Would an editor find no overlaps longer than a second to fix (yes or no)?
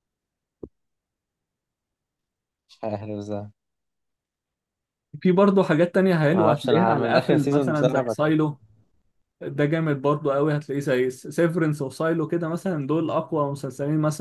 no